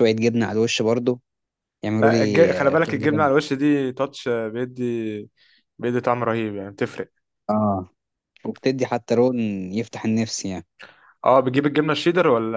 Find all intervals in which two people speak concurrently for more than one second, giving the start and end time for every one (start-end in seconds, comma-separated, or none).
2.0-3.3